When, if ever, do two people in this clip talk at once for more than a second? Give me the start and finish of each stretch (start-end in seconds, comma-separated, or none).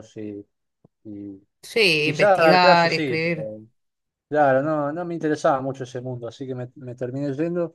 2.0-3.5